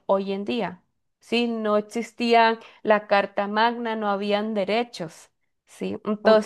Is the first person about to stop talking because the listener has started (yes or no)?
yes